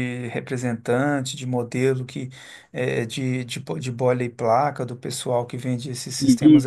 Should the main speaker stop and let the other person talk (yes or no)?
no